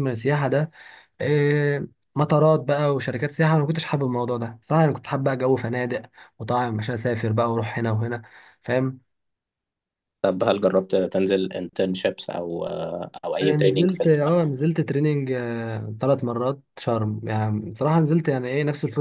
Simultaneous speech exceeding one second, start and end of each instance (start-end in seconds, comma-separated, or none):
13.4-14.6